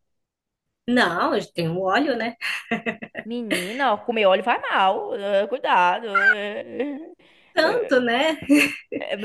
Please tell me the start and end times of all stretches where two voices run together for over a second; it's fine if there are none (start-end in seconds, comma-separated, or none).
none